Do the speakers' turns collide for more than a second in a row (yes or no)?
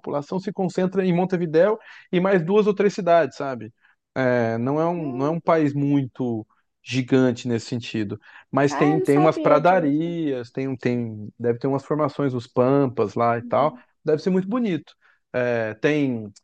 yes